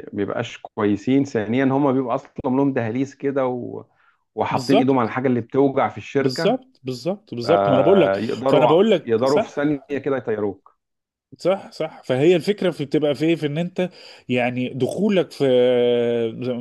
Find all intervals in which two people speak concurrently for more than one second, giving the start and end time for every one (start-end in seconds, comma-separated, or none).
7.4-9.6